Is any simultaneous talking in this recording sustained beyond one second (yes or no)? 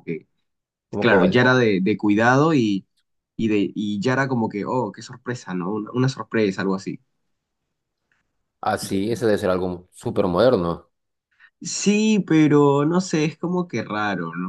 no